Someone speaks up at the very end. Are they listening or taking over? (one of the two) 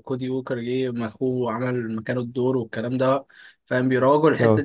listening